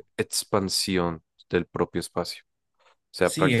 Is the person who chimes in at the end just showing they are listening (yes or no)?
no